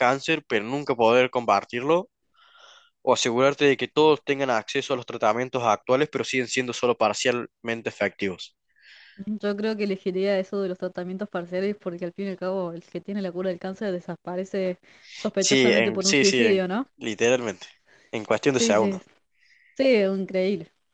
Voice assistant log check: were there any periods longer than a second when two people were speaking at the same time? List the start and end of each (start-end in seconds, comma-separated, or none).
15.4-16.9